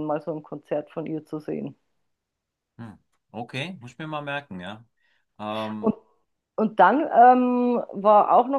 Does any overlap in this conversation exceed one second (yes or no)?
no